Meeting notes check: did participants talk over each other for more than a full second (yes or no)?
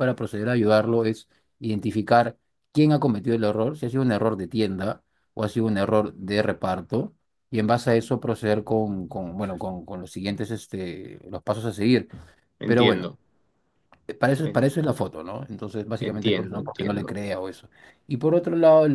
yes